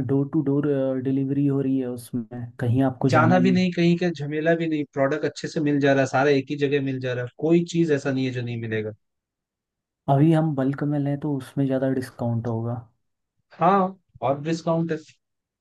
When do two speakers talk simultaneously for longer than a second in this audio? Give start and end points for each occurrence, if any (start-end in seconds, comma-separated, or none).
none